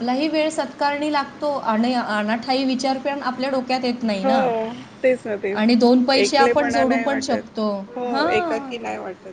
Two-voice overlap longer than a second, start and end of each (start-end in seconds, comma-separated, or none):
6.2-7.5